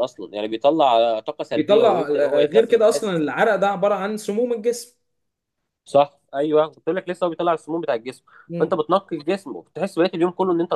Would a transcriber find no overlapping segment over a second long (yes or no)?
no